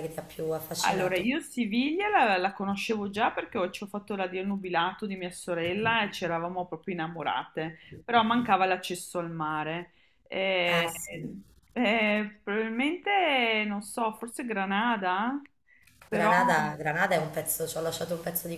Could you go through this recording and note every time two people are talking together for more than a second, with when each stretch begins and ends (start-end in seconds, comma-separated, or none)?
none